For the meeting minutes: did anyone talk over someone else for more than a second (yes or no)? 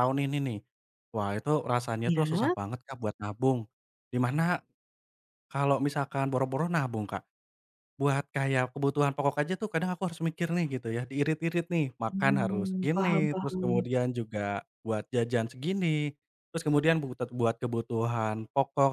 yes